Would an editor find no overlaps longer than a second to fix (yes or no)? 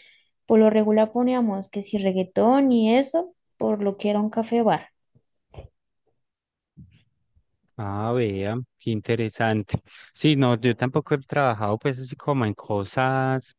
yes